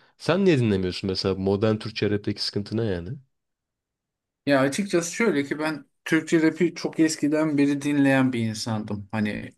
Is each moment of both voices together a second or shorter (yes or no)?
yes